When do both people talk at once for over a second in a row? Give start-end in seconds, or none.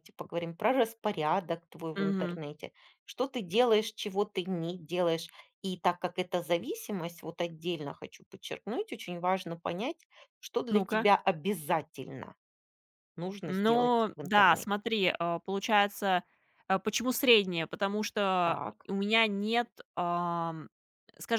13.4-14.7